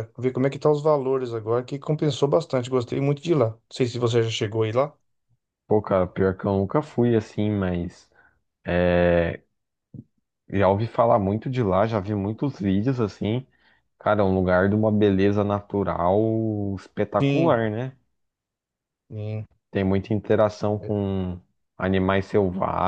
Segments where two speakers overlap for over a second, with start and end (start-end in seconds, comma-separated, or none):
none